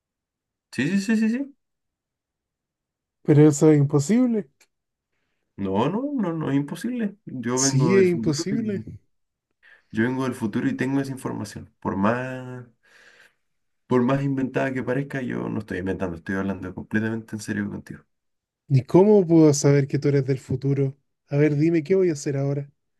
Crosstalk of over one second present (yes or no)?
yes